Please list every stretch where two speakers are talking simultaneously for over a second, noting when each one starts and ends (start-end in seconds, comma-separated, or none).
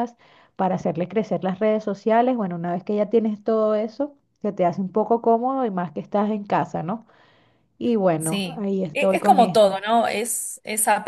8.2-9.8